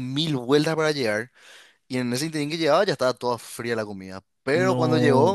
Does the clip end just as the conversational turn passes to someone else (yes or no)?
no